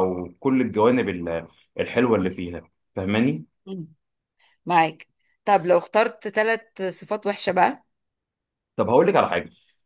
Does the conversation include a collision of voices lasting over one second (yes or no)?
no